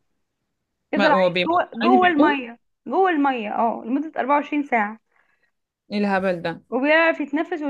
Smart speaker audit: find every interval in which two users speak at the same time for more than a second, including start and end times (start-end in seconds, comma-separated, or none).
0.9-2.4